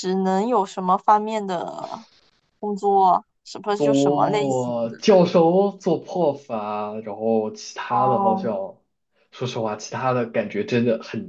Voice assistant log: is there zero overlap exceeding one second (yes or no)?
no